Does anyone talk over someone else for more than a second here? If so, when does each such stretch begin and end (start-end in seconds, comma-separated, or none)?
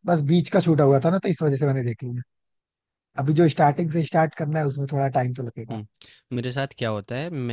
none